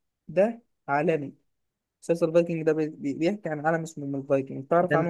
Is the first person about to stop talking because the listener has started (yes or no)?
yes